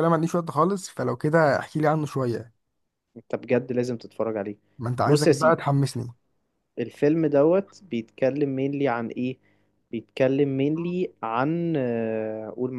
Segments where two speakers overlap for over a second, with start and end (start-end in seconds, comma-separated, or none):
none